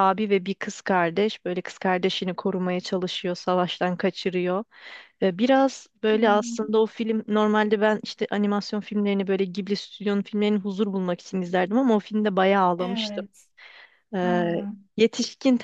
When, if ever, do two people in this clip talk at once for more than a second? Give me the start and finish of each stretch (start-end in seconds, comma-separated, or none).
none